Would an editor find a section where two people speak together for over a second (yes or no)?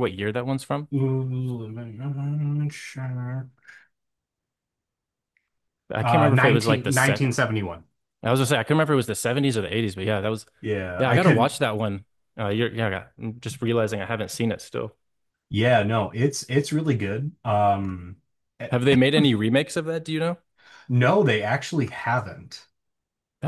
yes